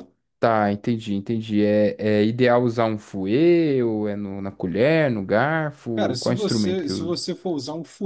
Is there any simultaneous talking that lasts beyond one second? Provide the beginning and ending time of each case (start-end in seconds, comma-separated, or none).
5.9-7.2